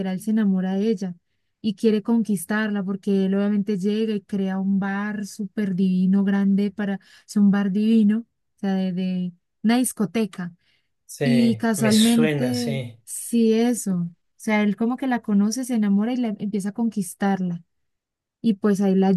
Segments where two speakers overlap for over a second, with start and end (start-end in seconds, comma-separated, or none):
11.2-13.0